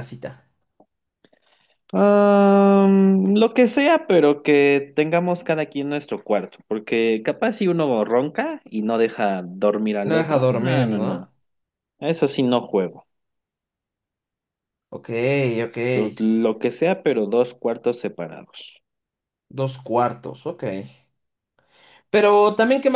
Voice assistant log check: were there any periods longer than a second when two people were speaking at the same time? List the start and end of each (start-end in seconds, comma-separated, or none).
10.0-11.3